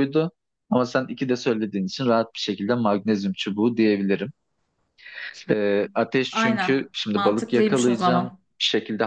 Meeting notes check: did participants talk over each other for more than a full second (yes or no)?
yes